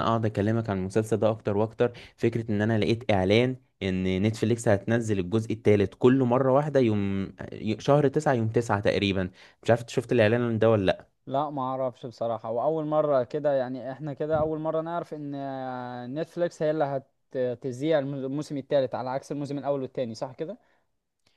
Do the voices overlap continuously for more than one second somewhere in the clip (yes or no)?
no